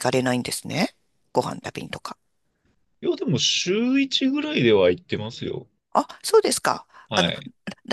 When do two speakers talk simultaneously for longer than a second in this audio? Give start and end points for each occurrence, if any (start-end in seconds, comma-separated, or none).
none